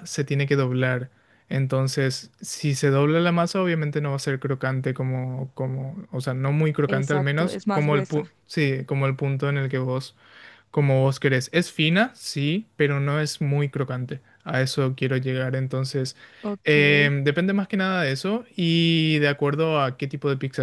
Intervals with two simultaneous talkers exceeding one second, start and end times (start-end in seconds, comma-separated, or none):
6.9-8.3